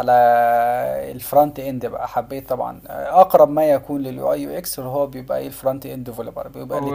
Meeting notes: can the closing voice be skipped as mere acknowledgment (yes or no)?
no